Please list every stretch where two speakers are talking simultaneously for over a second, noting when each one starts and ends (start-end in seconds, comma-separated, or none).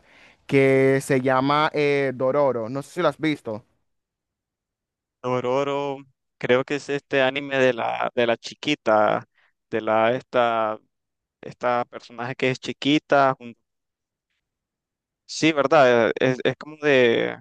none